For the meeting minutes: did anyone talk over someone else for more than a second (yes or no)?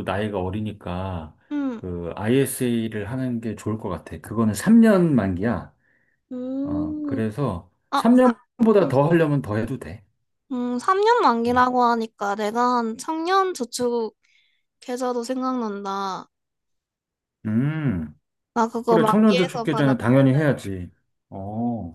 yes